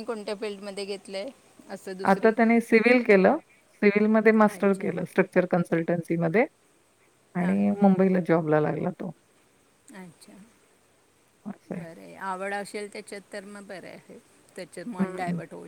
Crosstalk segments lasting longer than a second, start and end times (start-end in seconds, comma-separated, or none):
none